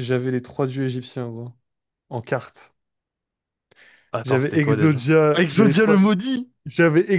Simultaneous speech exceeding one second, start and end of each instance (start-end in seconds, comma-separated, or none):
4.2-6.0